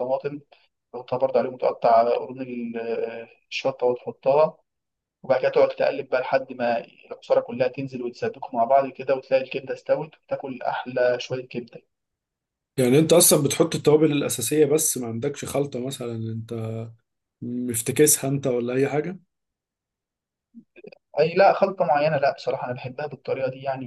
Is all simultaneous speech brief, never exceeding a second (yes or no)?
yes